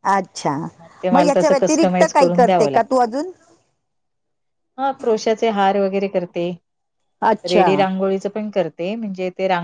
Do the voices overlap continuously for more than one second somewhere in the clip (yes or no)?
yes